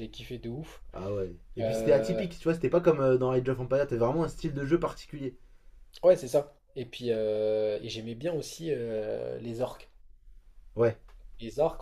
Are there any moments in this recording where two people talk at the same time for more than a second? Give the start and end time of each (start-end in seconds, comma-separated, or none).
none